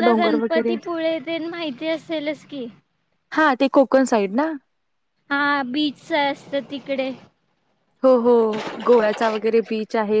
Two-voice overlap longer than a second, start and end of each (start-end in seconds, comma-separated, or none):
none